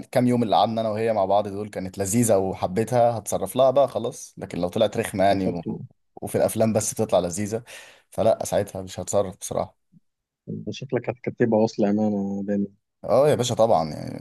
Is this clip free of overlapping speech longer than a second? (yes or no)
yes